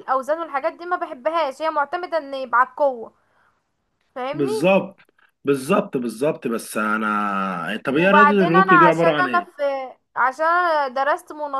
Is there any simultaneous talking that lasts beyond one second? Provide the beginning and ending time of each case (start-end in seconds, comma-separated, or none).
7.9-9.5